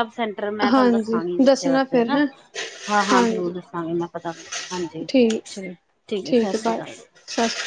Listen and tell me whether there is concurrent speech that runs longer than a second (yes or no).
yes